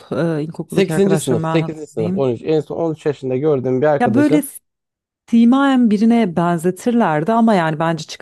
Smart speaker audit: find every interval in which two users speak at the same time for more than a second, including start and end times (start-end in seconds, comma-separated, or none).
0.7-2.3